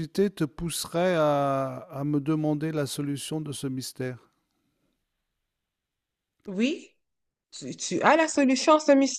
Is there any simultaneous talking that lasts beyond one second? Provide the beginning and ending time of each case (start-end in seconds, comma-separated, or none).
none